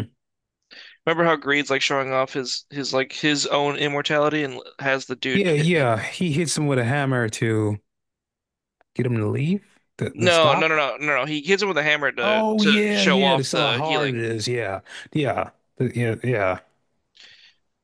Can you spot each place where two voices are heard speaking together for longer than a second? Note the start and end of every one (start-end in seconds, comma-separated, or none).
12.2-14.2